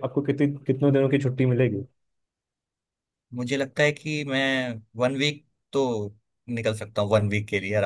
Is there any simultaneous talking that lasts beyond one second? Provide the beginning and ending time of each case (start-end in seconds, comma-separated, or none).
none